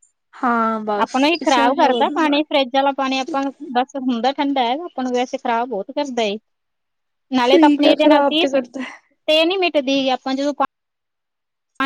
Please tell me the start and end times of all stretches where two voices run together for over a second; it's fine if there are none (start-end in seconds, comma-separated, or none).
7.5-8.9